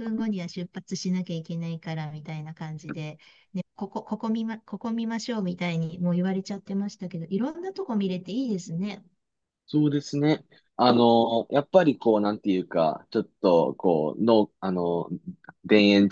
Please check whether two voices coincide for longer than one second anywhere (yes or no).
no